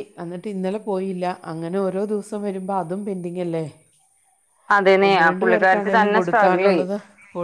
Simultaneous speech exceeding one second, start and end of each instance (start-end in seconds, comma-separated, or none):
5.1-6.8